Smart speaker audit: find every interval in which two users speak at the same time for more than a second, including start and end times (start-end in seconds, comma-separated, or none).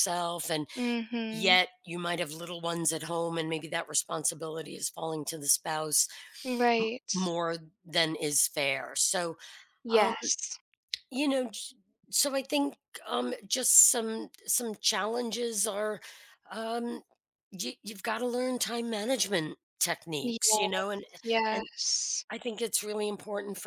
none